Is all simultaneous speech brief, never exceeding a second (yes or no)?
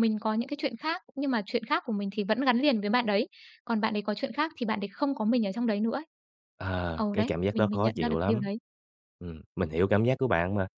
no